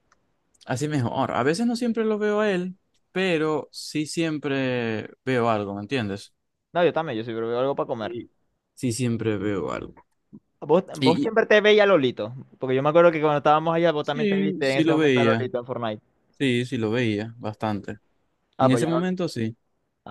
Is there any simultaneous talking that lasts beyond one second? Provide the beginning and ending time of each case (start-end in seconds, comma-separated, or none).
14.0-15.5